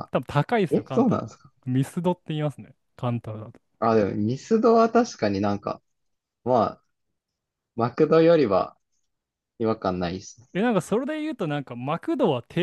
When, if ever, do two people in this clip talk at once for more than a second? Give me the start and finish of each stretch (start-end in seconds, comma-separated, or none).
none